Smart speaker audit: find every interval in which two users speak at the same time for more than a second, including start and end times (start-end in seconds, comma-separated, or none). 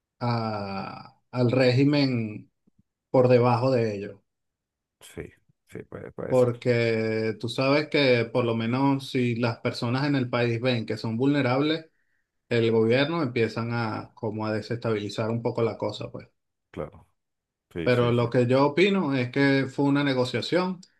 none